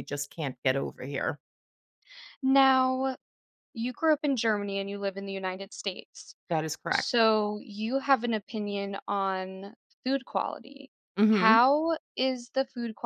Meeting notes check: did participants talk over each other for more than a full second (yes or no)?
no